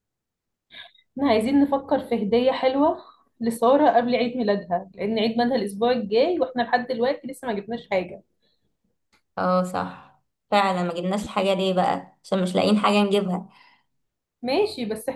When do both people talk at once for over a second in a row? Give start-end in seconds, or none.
none